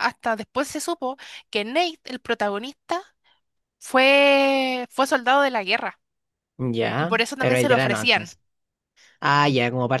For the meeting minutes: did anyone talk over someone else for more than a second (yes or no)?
yes